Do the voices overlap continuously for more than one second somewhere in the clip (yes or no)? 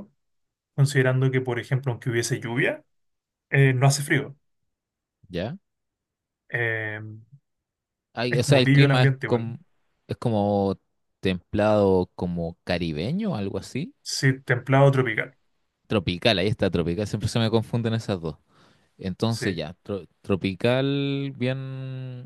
yes